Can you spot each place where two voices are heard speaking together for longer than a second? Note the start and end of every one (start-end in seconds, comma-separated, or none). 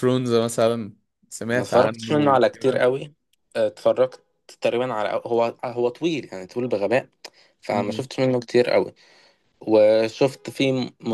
1.6-2.8